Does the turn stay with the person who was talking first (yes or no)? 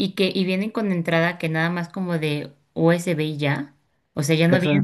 yes